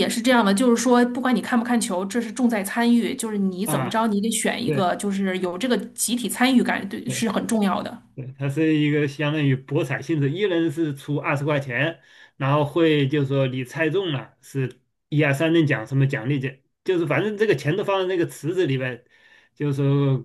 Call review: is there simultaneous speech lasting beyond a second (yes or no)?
no